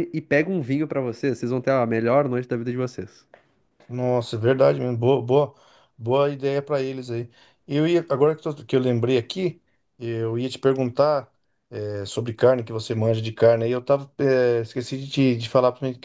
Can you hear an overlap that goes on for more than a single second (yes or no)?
no